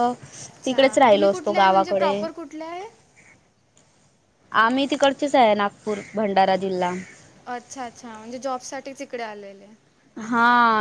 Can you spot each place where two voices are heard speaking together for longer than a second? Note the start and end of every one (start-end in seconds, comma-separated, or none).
0.6-2.1